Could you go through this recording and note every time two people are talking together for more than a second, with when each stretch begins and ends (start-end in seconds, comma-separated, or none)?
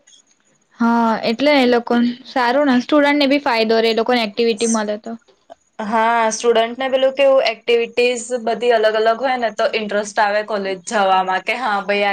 none